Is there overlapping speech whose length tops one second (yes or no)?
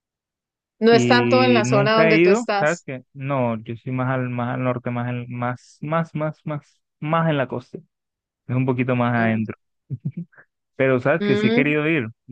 yes